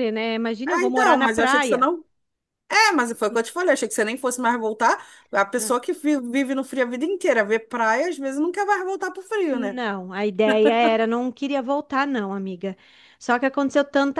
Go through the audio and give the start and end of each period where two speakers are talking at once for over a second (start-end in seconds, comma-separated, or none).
0.7-1.9